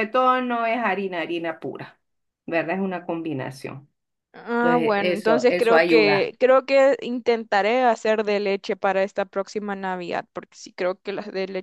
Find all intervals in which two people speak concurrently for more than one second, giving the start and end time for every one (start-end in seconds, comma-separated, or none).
4.6-6.3